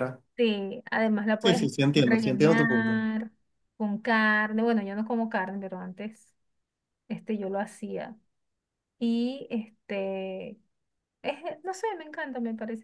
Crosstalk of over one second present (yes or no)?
yes